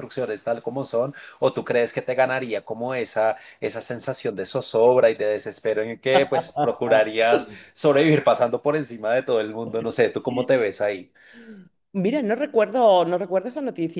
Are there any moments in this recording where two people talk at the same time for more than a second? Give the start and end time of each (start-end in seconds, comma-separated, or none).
none